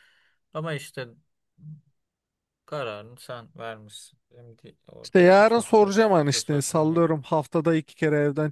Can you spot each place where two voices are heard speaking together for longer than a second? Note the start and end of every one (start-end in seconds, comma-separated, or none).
5.0-7.0